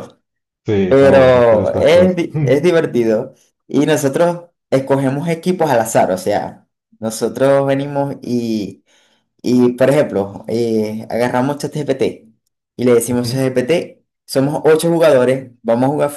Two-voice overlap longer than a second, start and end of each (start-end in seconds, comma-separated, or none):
0.8-2.7